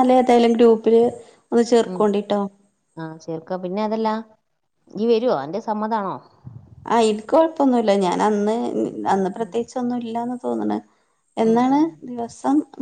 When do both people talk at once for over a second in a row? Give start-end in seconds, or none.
none